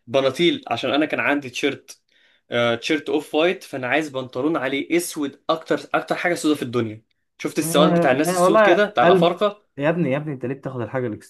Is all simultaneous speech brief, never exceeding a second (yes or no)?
no